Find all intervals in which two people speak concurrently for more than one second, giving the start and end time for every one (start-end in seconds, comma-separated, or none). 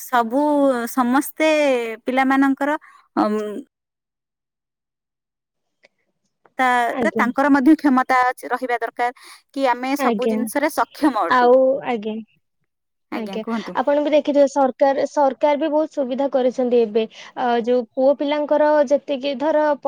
none